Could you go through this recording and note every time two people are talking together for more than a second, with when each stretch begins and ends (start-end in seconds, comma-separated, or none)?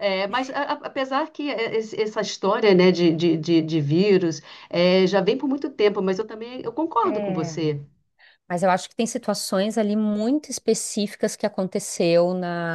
none